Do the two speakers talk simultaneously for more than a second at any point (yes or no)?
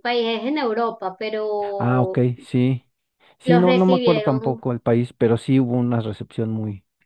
yes